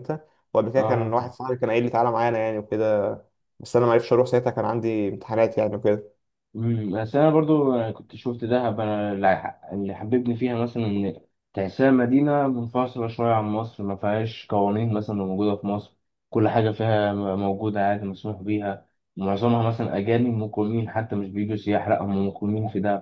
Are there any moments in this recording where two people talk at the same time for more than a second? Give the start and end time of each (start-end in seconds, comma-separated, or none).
none